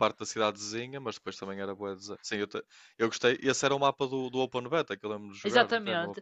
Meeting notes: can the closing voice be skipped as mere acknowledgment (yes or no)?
no